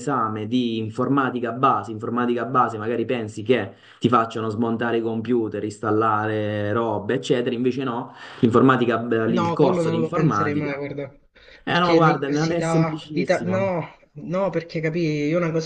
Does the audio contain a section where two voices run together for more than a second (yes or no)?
yes